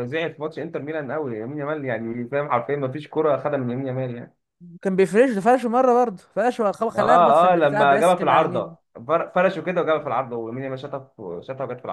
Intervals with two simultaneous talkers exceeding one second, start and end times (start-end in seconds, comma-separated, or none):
7.0-8.8